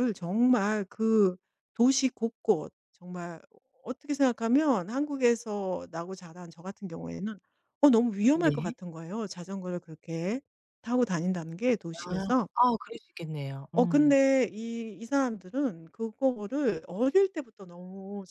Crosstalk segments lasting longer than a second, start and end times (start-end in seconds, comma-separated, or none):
none